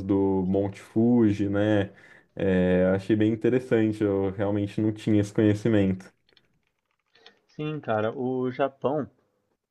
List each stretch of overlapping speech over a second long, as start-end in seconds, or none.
none